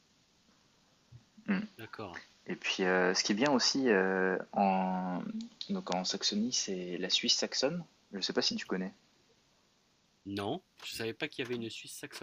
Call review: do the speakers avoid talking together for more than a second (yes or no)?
yes